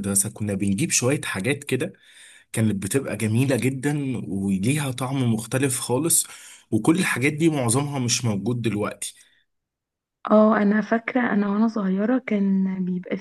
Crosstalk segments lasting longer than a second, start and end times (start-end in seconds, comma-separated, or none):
none